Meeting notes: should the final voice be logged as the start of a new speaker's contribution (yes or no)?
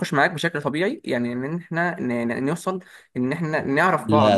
yes